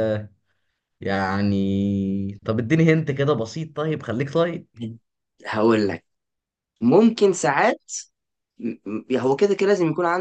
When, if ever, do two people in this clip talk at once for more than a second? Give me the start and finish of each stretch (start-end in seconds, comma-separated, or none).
none